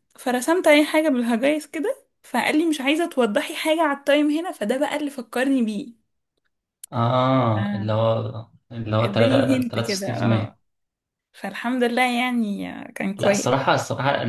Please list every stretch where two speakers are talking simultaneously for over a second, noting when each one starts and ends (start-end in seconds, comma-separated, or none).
9.0-10.6